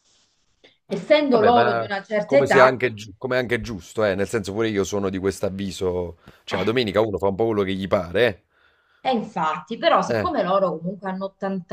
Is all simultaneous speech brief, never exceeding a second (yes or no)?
no